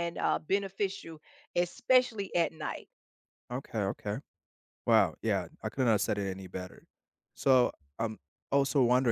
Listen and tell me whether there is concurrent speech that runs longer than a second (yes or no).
no